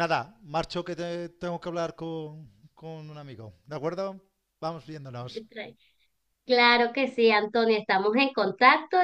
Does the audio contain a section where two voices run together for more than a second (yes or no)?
no